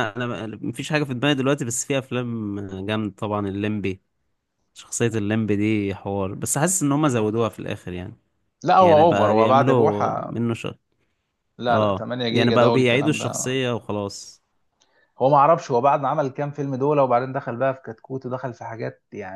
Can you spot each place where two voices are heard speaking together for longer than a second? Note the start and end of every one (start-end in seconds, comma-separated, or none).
8.8-10.4, 11.7-13.5